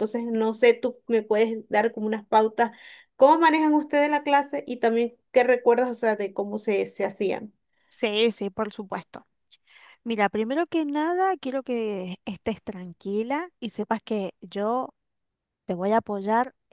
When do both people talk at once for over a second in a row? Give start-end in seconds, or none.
none